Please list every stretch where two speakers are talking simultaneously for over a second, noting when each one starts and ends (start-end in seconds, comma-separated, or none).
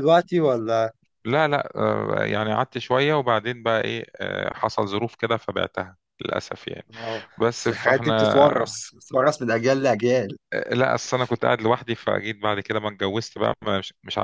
7.4-8.8